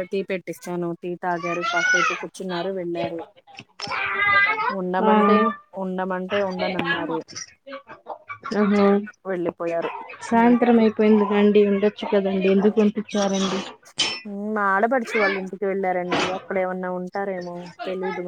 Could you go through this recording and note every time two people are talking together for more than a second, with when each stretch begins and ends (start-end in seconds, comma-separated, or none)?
none